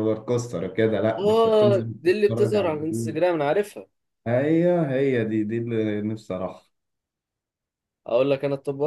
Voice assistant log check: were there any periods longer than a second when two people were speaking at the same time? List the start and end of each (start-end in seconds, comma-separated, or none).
1.2-3.2